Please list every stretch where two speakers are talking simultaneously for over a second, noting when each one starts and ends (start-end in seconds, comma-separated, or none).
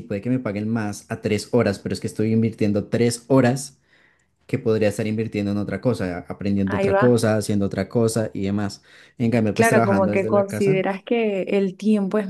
9.5-10.8